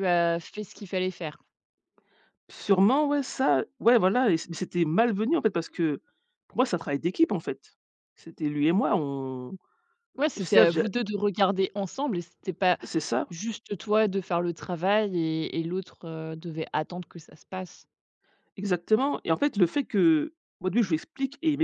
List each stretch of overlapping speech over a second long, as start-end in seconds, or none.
none